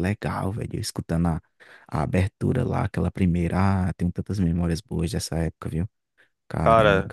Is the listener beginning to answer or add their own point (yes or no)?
yes